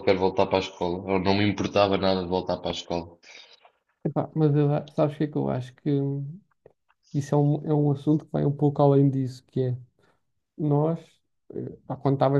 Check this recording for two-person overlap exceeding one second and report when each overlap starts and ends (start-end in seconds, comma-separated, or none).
none